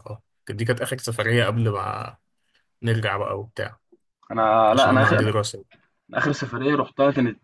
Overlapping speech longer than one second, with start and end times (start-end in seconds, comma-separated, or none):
none